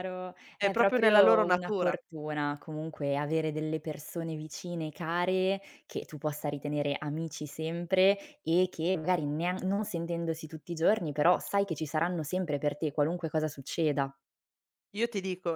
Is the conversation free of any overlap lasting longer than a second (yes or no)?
no